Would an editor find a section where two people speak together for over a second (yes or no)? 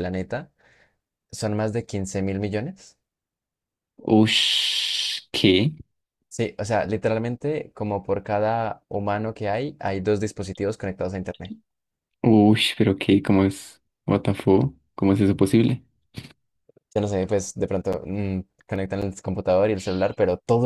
no